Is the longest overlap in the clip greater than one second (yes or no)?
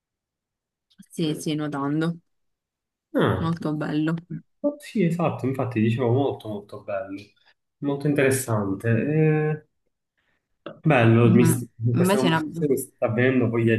yes